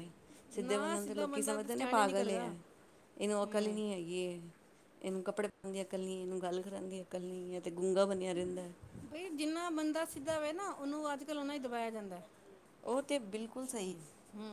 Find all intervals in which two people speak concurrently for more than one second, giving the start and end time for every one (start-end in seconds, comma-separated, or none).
0.7-2.5